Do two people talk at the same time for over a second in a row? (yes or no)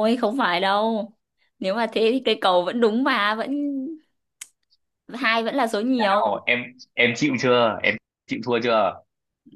no